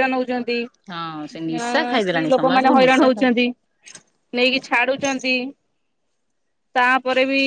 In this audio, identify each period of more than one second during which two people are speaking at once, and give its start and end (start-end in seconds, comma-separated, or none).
0.9-3.3